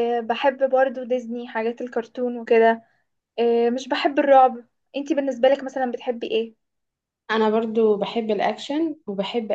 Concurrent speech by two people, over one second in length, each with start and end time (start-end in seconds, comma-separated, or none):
none